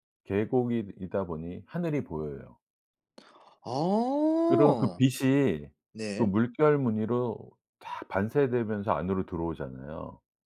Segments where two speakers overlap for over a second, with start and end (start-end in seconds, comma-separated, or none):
none